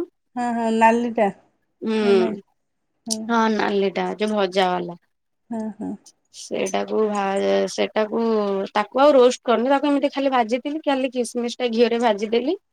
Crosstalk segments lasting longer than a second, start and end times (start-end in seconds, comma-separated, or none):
none